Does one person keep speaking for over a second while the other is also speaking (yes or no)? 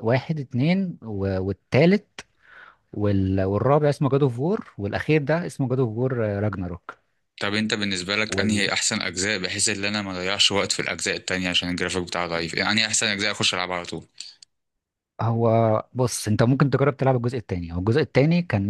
no